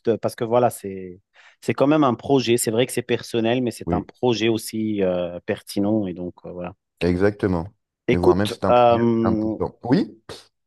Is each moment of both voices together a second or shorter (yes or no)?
no